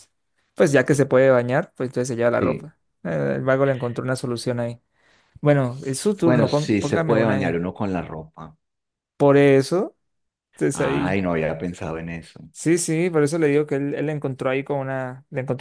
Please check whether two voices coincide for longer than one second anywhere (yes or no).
yes